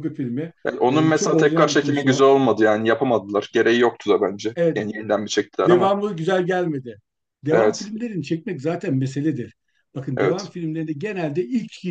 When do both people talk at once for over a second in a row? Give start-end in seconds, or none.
0.9-2.2